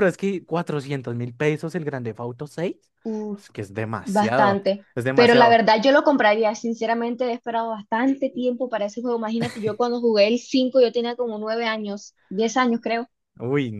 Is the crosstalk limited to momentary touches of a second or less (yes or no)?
no